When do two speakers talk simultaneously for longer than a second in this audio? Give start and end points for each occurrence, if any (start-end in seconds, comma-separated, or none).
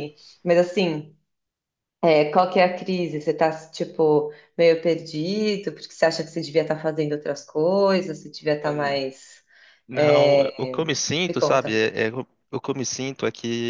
none